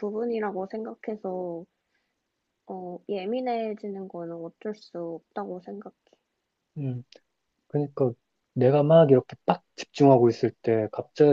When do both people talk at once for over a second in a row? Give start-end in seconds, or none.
none